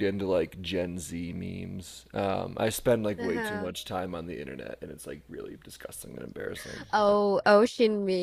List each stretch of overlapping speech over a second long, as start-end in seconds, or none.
none